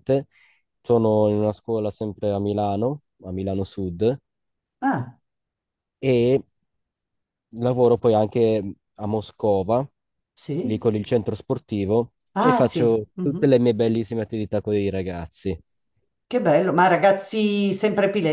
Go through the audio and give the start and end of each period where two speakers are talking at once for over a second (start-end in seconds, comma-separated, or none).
12.3-13.6